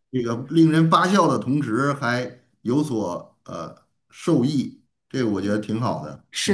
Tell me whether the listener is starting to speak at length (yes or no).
yes